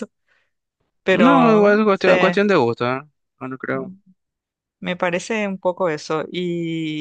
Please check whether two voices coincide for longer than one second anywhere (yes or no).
yes